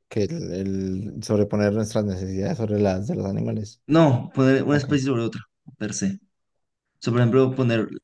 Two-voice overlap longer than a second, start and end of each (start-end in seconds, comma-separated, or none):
none